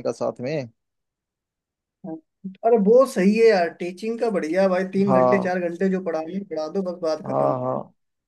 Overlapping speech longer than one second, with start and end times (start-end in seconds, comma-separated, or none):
none